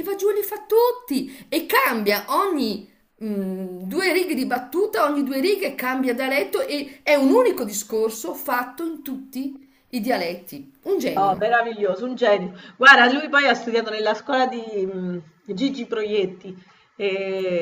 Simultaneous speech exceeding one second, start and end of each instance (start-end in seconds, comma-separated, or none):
none